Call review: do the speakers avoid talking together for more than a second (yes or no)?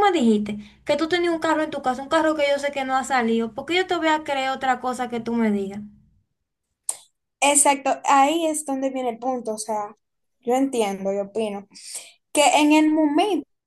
yes